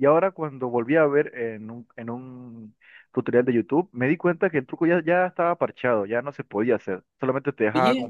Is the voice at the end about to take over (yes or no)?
no